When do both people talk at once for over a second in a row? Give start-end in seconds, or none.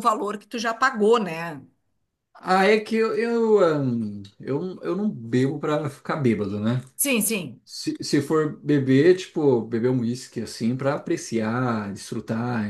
none